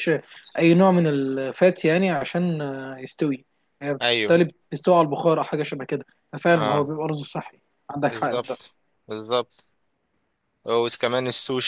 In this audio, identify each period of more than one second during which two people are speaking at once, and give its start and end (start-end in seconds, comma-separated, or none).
none